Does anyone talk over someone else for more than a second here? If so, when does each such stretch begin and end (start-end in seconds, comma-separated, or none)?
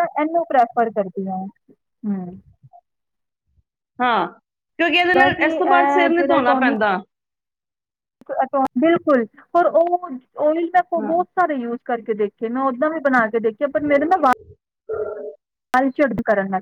5.2-6.7